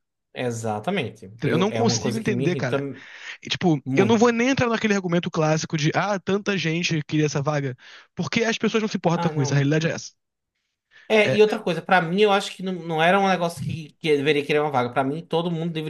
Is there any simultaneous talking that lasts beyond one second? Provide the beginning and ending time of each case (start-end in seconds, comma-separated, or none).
1.4-2.8